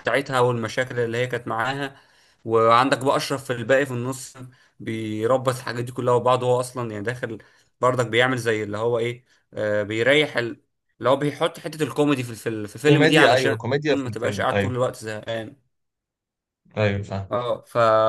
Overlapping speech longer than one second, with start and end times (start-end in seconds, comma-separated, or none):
12.9-14.7